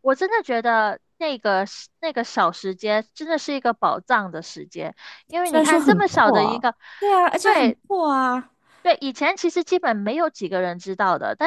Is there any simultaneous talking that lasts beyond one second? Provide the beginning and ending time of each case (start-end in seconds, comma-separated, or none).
5.4-6.8